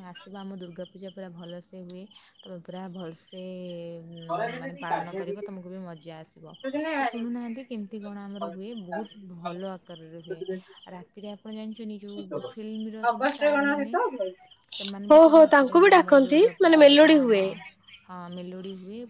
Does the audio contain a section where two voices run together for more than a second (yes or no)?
yes